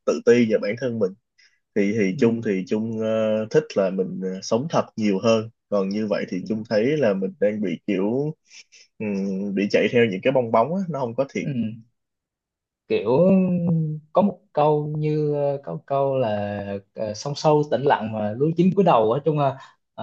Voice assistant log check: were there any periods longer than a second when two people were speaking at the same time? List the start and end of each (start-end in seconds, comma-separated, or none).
none